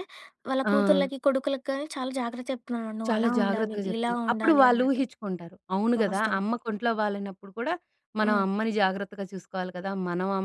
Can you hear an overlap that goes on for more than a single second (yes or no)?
yes